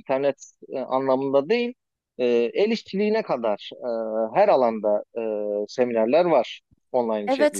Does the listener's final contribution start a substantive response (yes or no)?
yes